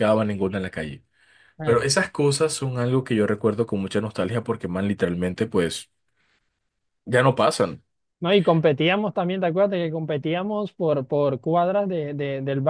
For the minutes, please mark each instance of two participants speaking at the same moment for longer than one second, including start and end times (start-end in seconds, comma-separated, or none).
none